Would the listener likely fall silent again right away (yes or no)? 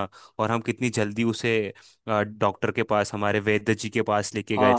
no